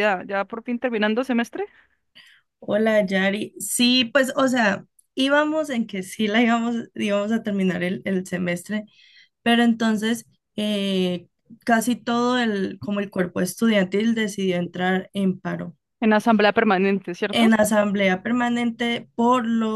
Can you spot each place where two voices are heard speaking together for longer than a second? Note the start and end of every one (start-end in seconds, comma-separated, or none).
none